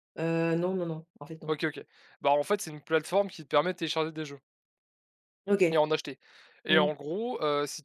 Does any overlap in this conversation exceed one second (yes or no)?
no